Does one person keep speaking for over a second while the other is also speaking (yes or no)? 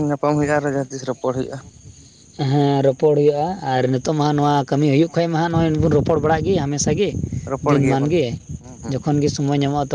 no